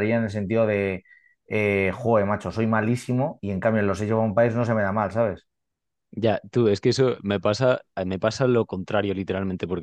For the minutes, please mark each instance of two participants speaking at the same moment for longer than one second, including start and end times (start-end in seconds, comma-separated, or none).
none